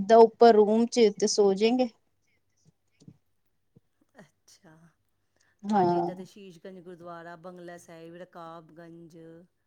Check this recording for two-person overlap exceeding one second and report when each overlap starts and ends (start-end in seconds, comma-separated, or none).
none